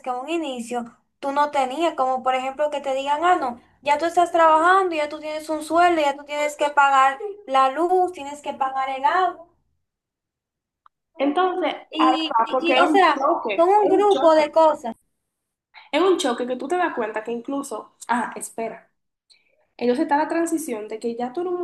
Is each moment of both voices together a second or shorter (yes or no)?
no